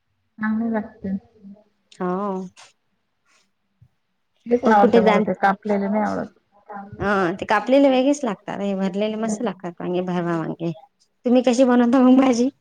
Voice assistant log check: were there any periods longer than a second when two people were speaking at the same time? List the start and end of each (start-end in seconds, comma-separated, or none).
none